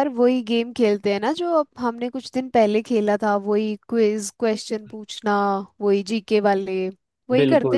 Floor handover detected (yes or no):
yes